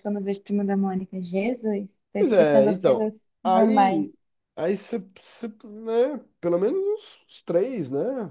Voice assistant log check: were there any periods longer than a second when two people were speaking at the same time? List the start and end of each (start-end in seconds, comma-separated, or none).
2.2-4.0